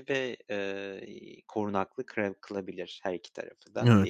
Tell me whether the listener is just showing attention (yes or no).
no